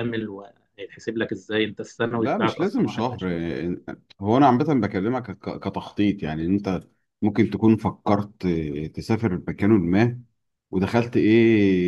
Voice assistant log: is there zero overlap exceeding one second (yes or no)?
no